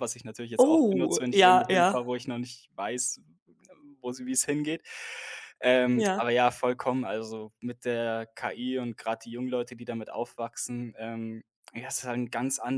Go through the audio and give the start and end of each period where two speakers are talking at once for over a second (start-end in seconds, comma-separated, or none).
0.6-1.9